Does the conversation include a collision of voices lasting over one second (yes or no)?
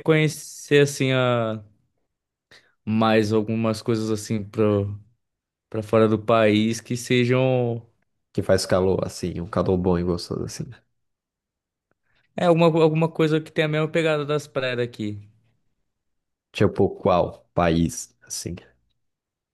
no